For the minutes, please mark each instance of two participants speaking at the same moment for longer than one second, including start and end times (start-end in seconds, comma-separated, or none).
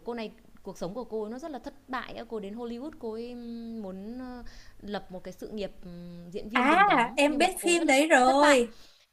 6.5-8.6